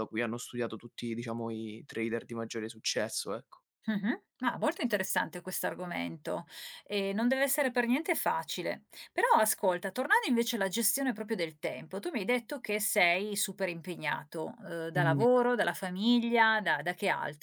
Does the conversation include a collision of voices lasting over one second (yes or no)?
no